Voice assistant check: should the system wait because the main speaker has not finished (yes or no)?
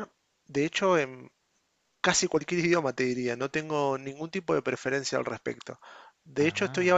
yes